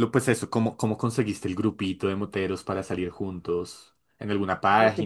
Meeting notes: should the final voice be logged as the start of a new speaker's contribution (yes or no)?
yes